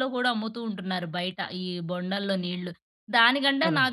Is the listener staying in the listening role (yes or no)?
yes